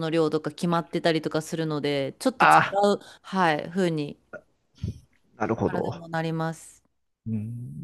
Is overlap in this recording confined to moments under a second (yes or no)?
yes